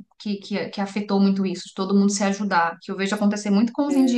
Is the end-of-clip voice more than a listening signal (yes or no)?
no